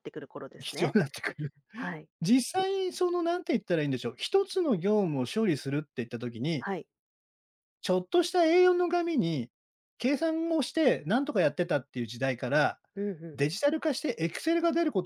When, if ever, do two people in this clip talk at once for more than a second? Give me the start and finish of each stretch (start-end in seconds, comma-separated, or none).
none